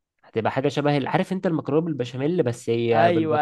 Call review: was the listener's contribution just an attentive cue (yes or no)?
no